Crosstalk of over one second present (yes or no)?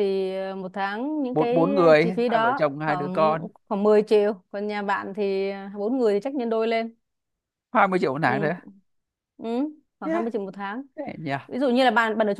yes